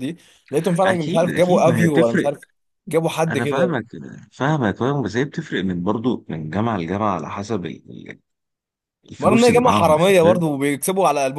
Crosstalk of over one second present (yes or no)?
yes